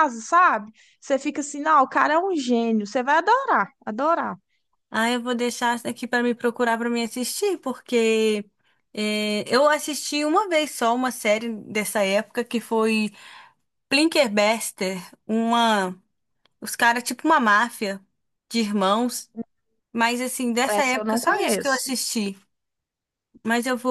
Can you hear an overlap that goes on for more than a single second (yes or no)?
yes